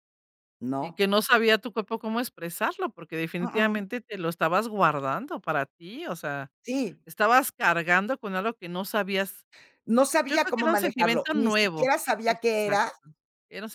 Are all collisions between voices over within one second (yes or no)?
no